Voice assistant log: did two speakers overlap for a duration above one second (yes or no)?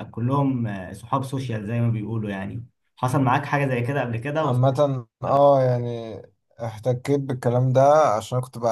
no